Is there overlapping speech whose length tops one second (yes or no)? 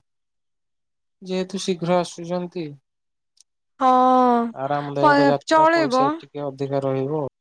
yes